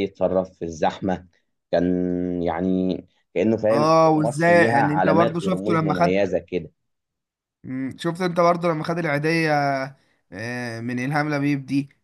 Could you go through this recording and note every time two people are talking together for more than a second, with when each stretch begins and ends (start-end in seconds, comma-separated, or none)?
3.7-6.2